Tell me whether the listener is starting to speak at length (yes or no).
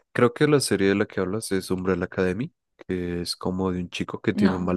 no